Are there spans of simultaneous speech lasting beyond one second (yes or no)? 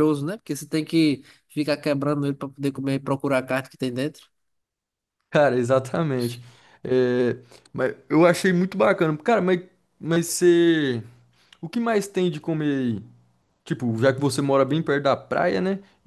no